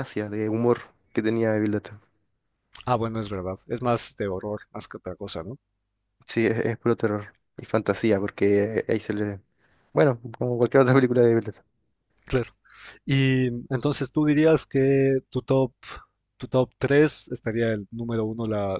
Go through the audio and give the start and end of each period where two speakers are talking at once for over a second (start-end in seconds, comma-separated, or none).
none